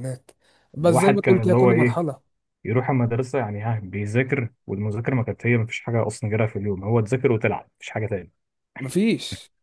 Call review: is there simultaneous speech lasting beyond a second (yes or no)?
yes